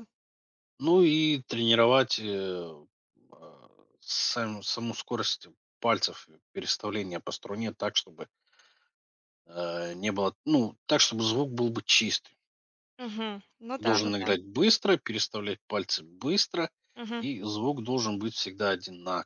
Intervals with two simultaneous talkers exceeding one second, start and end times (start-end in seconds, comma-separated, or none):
none